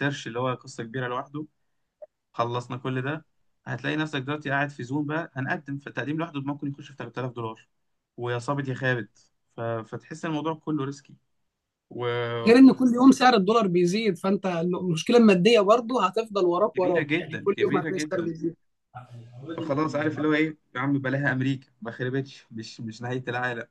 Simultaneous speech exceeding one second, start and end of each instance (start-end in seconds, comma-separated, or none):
16.8-18.3